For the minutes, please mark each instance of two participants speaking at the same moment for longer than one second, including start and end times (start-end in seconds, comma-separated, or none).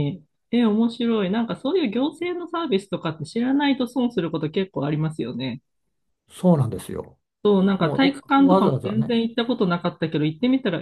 7.8-9.2